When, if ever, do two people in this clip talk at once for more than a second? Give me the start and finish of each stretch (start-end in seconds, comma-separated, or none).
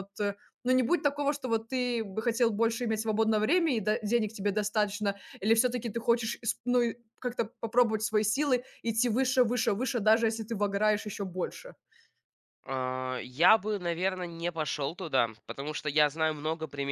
none